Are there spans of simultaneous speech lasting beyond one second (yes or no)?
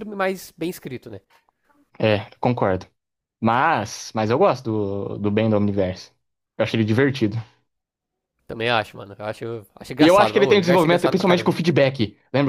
yes